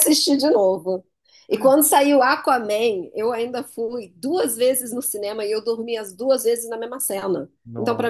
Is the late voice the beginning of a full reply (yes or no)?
no